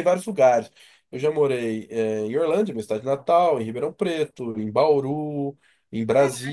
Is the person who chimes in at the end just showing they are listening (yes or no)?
yes